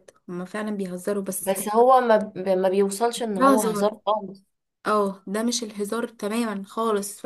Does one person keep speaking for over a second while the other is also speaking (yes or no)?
no